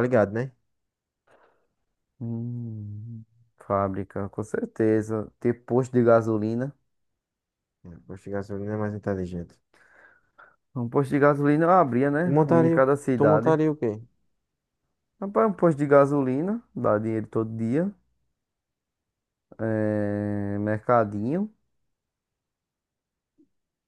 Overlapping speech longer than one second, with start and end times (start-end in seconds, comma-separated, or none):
12.2-13.6